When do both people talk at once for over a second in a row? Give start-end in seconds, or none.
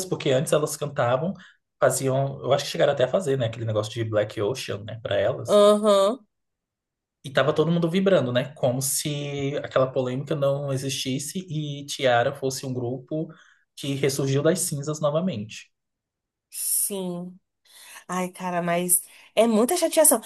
none